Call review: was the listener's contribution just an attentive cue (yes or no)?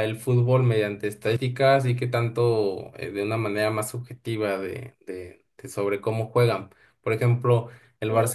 yes